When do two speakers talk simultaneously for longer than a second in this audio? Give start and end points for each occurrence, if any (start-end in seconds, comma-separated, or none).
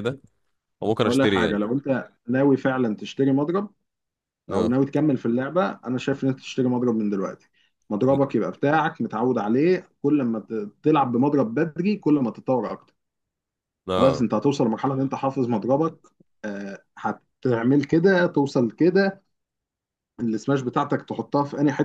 none